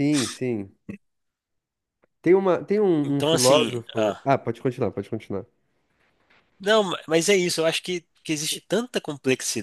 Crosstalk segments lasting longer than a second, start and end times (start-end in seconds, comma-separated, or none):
3.0-4.2